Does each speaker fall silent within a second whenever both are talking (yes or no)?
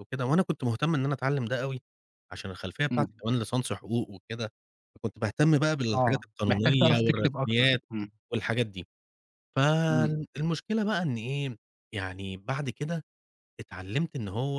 no